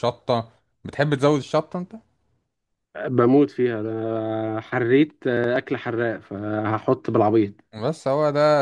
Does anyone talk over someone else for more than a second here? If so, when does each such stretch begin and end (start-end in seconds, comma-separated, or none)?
none